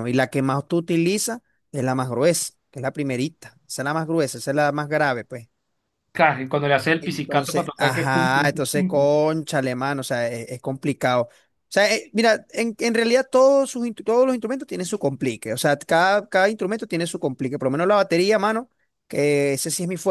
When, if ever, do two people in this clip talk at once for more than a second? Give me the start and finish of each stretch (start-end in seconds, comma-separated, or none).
7.0-9.2